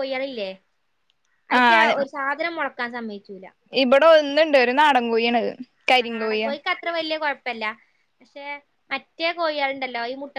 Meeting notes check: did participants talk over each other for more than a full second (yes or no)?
no